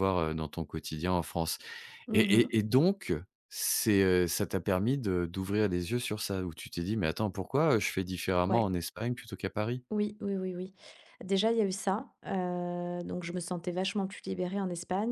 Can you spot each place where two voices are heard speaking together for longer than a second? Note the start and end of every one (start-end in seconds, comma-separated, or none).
none